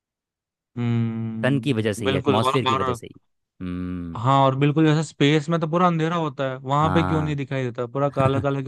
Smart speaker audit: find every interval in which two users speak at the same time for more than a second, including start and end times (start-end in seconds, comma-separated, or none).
1.4-3.0